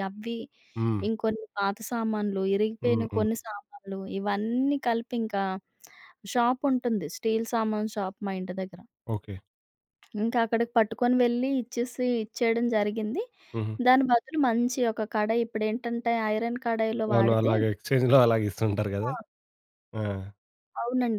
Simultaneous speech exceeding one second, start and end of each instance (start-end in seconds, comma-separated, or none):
none